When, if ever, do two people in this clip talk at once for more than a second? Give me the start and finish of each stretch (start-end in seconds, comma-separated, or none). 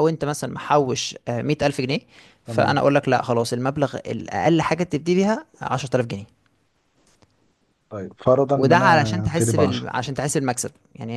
8.6-9.9